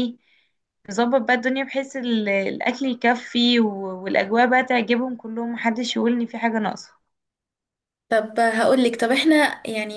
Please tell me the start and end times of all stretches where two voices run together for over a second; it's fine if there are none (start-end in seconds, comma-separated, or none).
none